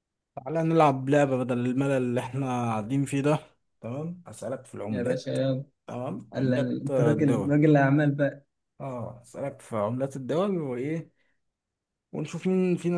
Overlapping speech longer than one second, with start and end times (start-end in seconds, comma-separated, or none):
6.3-7.5